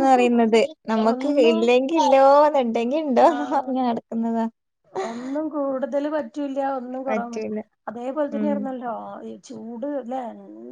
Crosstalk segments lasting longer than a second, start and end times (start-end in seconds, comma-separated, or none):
none